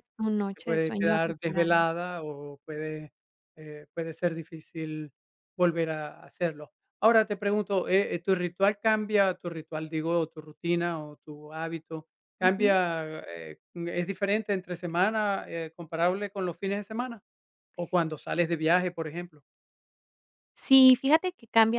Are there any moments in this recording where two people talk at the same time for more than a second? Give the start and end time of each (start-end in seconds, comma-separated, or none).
0.5-1.8